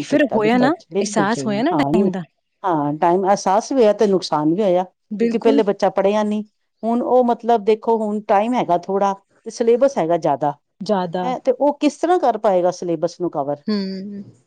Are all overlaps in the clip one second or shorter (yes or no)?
yes